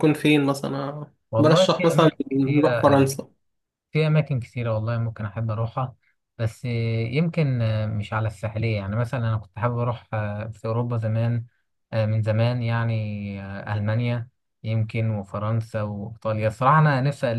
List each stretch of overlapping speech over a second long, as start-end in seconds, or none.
1.3-3.0